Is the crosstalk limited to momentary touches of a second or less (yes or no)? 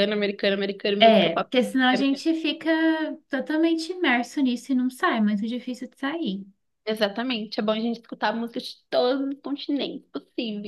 yes